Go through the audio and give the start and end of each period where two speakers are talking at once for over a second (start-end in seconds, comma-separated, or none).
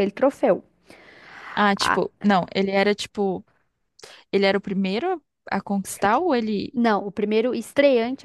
none